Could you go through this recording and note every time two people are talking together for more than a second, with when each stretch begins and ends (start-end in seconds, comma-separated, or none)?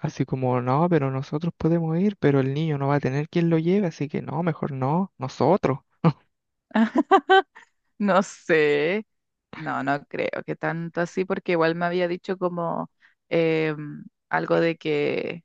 none